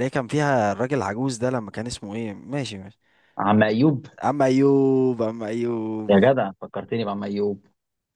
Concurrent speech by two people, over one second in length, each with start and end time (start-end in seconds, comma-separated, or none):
none